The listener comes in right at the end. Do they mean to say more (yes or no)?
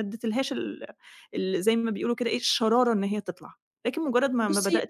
no